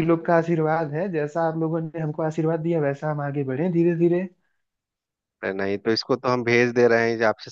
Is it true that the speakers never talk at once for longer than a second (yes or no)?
yes